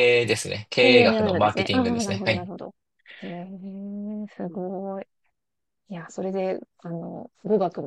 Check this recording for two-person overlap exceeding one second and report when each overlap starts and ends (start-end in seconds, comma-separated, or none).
0.8-2.5